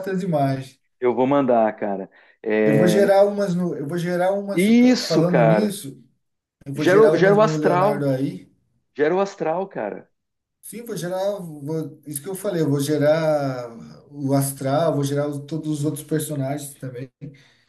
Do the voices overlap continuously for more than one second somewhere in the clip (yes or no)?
yes